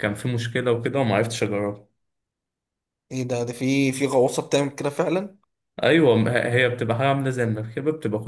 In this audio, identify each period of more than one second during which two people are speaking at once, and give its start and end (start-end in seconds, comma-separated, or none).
none